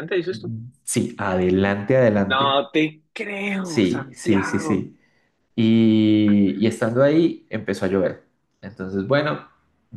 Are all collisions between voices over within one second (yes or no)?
no